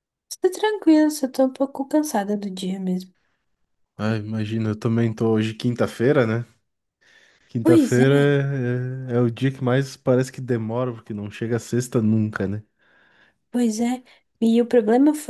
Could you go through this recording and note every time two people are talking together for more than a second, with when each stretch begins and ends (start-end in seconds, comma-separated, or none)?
none